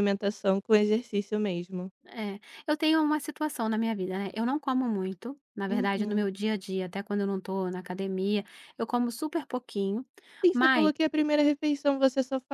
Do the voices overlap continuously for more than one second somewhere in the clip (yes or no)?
no